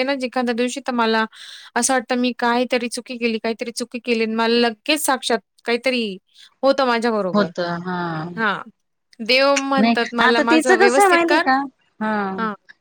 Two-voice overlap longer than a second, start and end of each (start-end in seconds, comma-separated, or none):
9.8-11.5